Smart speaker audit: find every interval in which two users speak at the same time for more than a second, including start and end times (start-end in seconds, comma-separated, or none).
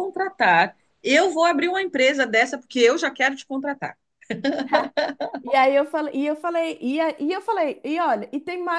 none